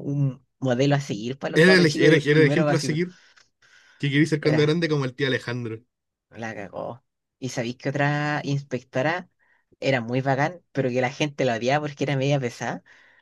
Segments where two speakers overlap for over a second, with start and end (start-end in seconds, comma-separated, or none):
1.5-3.0